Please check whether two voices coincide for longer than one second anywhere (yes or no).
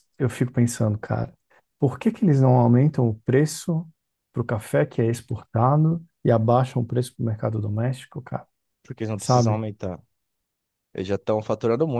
no